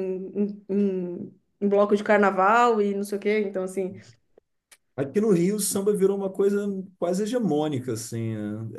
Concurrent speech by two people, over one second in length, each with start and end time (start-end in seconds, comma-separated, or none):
none